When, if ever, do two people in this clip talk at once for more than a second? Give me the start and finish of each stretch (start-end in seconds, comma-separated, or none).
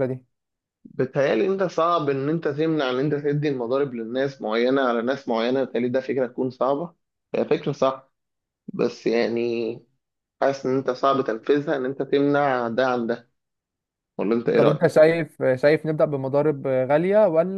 none